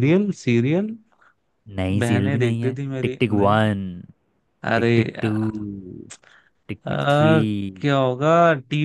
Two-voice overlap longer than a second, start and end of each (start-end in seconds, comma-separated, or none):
2.0-3.7